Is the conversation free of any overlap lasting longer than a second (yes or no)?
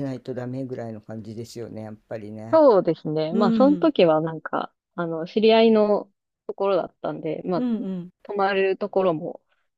yes